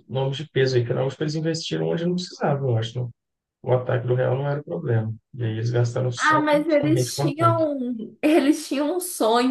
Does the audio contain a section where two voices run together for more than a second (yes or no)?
yes